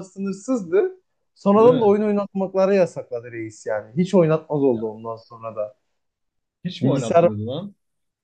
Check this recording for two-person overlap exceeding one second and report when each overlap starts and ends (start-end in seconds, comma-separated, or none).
none